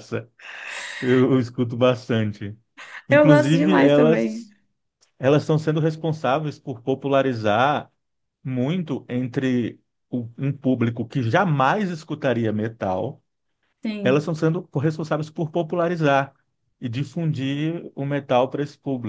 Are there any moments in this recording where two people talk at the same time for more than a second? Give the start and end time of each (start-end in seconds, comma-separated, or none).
3.1-4.4